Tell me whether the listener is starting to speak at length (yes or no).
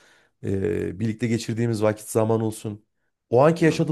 no